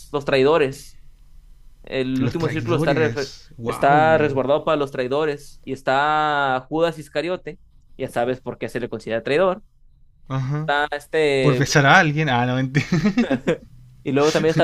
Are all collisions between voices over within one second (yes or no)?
no